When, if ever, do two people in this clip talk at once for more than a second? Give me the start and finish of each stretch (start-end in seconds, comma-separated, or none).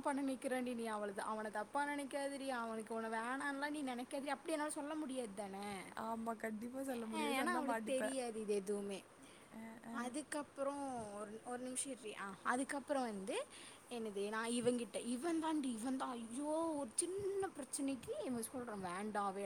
6.1-8.1